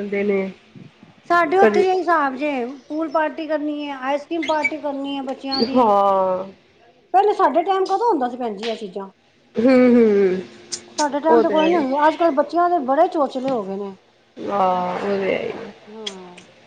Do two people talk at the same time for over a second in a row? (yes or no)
no